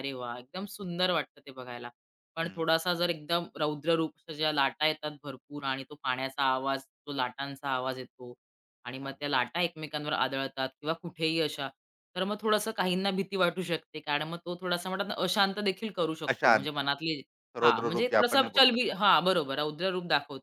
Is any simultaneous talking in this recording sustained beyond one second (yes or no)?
yes